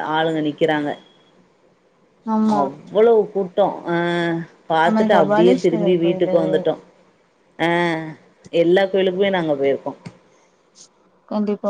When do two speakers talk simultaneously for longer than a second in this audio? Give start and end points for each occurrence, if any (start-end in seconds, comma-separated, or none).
4.8-6.4